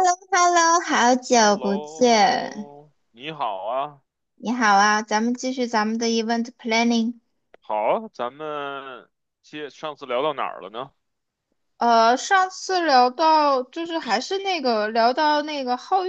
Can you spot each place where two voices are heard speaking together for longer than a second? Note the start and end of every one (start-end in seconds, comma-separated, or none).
1.3-2.7